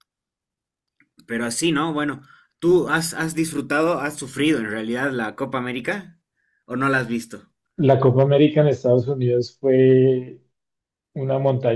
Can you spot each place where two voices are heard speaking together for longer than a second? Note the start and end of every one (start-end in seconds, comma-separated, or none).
none